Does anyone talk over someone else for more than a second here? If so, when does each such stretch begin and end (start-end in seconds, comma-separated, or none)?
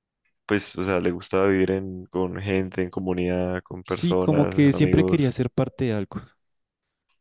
3.8-5.4